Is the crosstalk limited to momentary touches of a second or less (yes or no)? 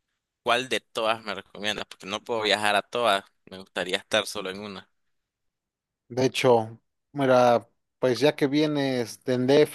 yes